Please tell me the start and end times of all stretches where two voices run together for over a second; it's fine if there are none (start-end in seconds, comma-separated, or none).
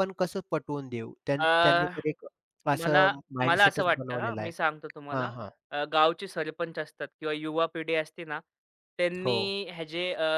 2.8-4.5